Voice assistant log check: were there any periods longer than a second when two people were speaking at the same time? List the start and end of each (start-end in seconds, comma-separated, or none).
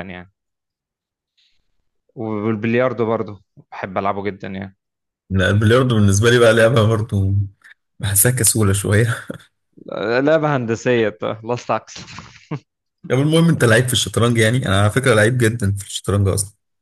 none